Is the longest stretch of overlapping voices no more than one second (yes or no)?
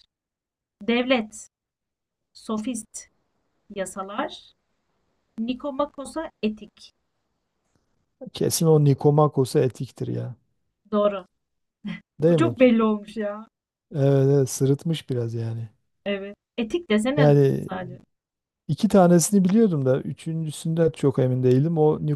yes